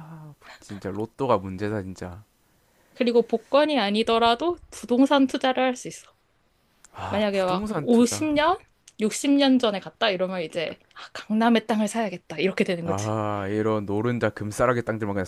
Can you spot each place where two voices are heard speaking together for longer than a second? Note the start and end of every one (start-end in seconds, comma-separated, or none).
7.1-8.3